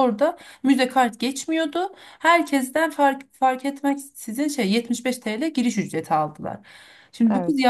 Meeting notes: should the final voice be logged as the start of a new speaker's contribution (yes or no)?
no